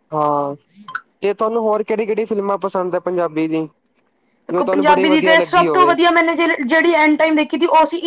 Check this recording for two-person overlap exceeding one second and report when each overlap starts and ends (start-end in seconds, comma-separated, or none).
4.5-6.0